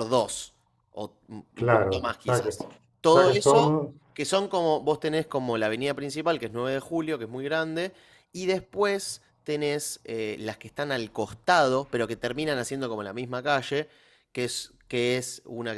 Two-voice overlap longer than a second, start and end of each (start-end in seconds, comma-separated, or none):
1.6-3.8